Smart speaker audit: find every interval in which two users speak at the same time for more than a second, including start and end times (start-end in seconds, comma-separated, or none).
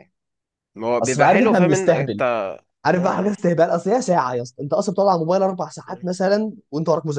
1.0-2.2